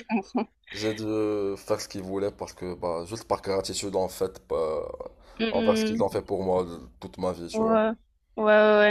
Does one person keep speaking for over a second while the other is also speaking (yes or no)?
no